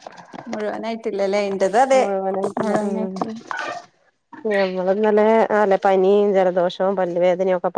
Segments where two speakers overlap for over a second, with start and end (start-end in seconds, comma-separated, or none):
none